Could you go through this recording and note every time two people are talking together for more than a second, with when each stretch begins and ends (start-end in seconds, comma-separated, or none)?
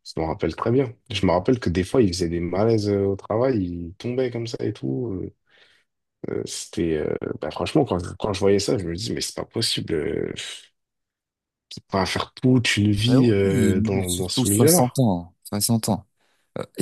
13.1-15.0